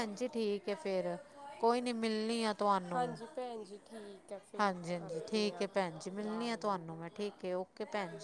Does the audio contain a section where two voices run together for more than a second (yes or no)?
yes